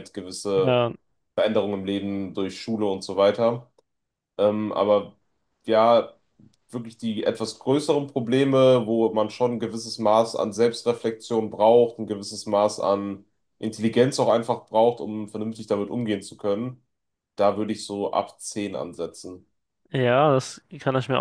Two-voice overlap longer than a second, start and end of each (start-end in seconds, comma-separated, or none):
none